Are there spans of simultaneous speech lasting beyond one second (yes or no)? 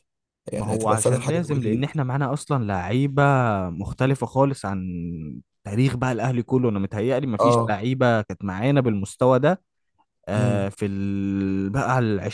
yes